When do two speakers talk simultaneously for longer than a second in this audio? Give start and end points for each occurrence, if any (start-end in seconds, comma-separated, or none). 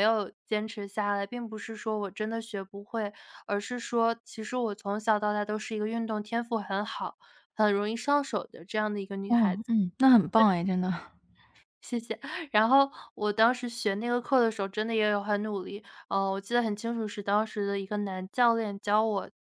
none